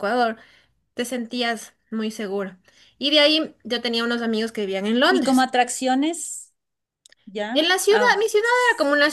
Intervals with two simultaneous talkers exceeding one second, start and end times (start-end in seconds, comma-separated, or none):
none